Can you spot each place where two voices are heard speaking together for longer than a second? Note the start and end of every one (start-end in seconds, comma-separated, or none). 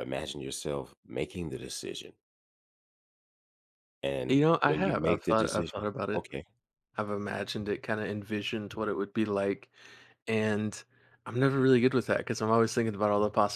4.3-6.3